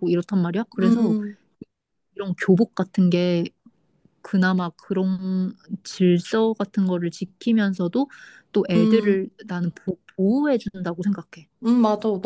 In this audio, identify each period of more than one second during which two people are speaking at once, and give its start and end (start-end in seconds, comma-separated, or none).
none